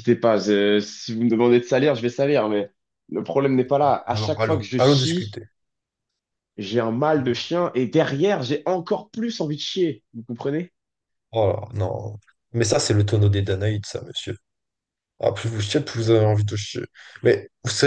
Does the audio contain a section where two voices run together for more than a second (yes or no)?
yes